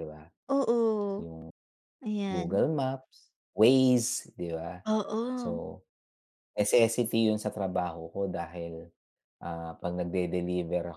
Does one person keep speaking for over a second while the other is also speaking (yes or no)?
no